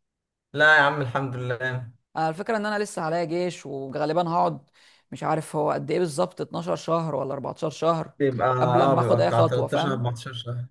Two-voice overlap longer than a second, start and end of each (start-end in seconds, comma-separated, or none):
8.6-10.0